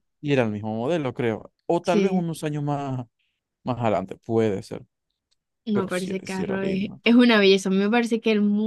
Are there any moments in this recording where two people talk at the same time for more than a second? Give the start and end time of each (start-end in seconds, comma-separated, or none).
5.7-7.0